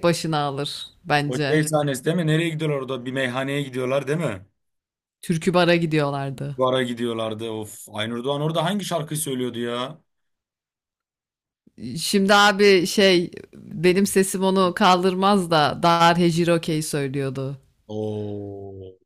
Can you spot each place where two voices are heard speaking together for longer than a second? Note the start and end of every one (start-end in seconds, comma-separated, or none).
none